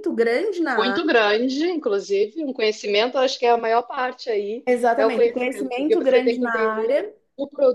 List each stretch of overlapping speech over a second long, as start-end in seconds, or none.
4.7-7.0